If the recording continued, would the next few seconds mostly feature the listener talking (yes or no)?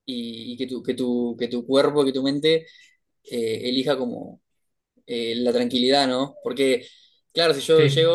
no